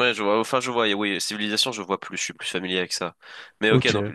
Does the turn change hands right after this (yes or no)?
no